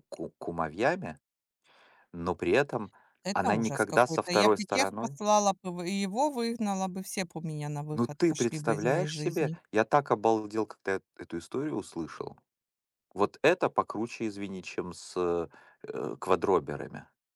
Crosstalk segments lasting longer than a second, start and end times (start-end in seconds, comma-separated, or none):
3.3-5.2, 7.9-9.6